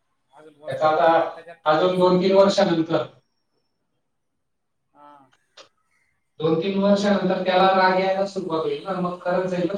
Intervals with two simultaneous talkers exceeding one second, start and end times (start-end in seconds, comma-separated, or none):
0.7-2.2